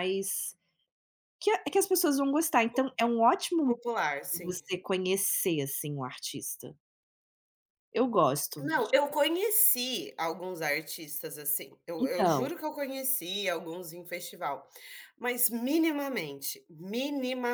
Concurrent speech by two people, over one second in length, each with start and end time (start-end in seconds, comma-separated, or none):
none